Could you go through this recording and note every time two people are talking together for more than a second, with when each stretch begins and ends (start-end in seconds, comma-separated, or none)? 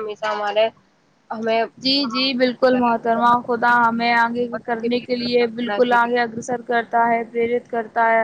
4.5-6.0